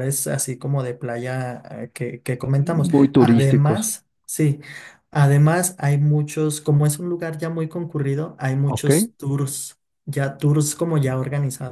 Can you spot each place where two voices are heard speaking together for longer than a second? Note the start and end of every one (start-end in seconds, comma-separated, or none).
2.6-3.9